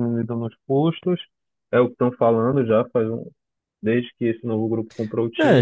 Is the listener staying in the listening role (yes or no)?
no